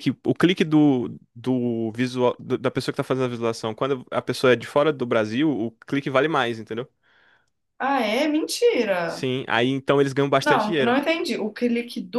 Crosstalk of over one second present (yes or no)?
no